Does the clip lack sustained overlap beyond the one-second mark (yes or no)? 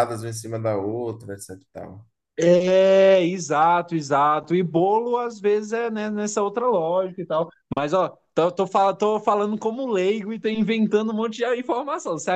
yes